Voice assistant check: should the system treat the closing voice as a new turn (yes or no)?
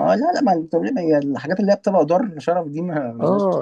yes